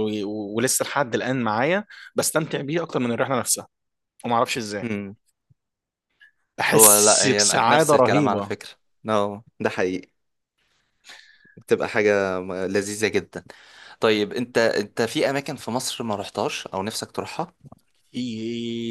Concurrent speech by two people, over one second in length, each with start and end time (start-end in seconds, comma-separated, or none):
6.7-8.5